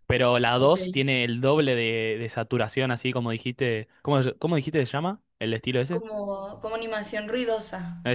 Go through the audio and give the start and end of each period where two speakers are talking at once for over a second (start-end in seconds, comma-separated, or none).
none